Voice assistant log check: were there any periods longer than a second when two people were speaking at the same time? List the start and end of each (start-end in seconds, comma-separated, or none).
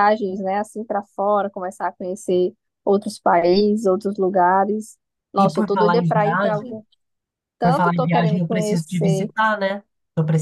5.4-6.8, 7.6-9.3